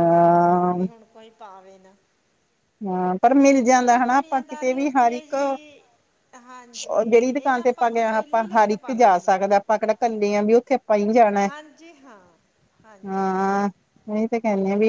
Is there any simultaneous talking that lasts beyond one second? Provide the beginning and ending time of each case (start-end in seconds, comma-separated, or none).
3.8-5.3, 7.1-9.4